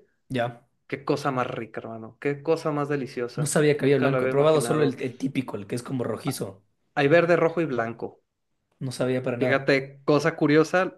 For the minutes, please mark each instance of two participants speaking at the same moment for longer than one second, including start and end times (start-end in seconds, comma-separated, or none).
3.4-5.0